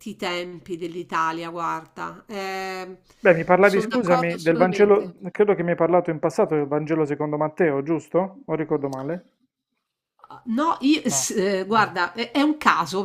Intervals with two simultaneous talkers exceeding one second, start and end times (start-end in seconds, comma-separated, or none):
3.6-5.1